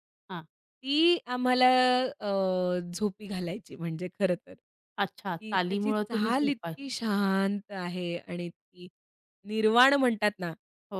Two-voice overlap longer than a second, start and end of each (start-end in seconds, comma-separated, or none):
5.4-6.7